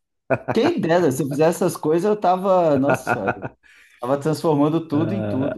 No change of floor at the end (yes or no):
no